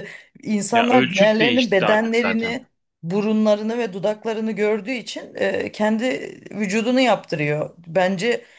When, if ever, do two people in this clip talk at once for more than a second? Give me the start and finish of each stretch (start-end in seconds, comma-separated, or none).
0.7-2.6